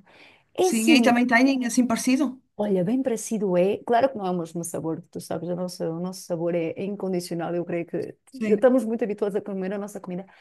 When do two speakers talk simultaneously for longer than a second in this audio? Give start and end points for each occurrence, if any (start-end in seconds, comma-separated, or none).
none